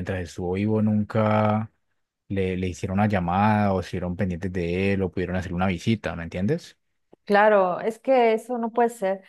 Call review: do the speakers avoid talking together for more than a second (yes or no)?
yes